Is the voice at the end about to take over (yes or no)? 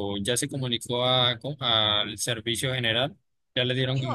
yes